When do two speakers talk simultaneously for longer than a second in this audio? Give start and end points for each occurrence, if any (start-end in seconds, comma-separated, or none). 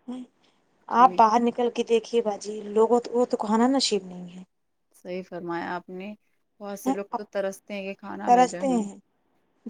none